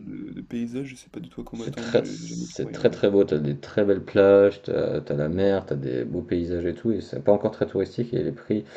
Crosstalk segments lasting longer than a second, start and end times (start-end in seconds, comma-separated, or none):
1.5-3.0